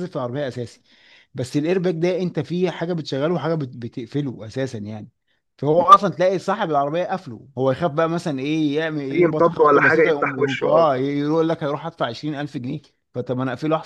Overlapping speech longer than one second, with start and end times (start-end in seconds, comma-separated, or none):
9.1-10.9